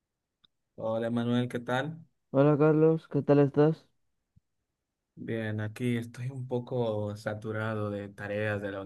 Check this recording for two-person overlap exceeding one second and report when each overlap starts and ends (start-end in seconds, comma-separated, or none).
none